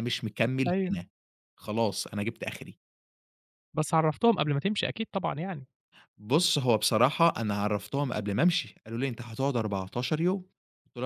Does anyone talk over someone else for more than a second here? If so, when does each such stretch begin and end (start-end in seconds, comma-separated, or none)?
none